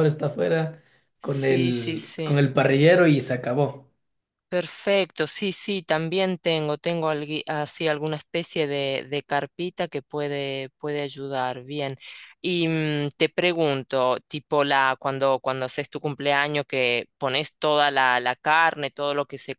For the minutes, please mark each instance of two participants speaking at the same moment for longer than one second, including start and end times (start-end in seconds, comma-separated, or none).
1.2-2.4